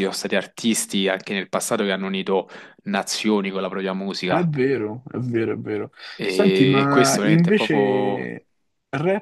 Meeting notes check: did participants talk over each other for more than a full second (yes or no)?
yes